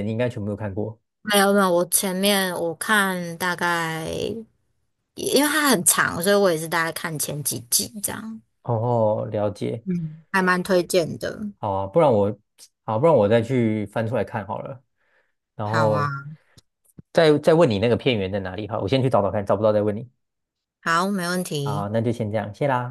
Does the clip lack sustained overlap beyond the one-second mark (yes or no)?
yes